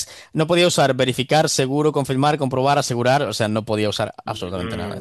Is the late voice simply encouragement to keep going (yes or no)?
no